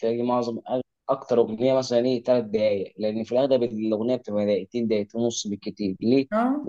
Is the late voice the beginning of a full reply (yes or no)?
no